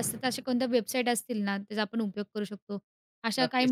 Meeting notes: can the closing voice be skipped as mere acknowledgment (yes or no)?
no